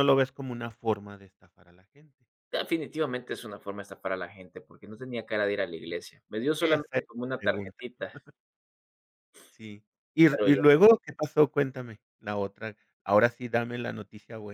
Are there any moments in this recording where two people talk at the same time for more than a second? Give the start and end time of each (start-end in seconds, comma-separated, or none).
6.6-7.8